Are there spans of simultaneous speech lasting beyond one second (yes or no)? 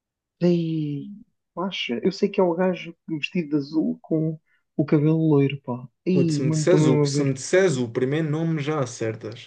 yes